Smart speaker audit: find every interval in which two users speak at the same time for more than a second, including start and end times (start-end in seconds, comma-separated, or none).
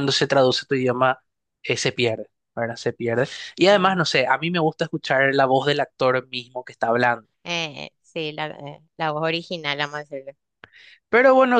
none